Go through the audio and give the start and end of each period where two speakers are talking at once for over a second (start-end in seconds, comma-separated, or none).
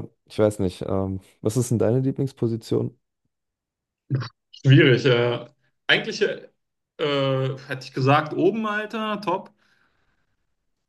none